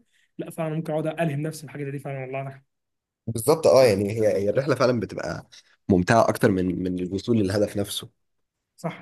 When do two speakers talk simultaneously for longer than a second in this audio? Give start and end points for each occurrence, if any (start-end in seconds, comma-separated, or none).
none